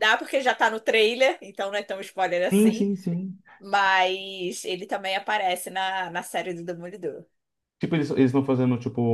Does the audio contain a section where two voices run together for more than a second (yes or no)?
no